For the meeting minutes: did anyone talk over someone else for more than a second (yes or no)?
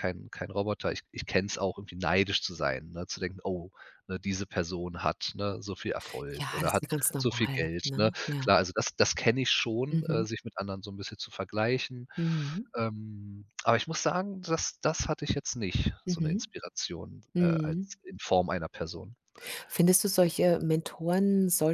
yes